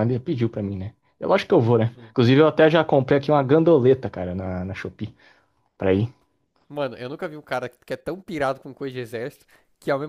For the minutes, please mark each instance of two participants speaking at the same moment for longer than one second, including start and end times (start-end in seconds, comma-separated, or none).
none